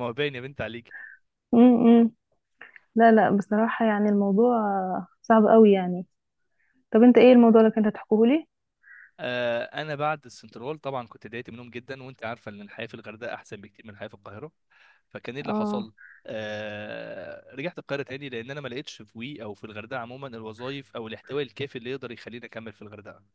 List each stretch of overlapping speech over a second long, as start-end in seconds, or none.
none